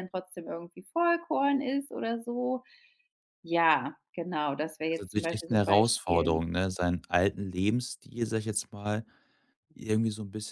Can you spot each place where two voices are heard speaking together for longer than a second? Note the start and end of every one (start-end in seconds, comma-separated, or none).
4.8-6.4